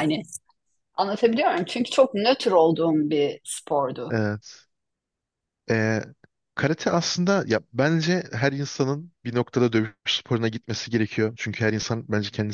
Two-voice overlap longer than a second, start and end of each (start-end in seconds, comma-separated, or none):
none